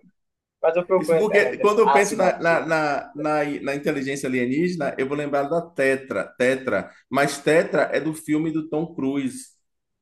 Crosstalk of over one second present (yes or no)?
yes